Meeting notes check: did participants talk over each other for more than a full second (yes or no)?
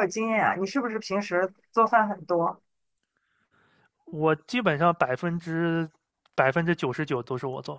no